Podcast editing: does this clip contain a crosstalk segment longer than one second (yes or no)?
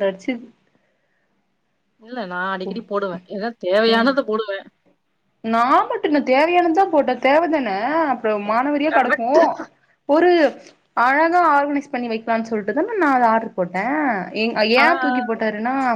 no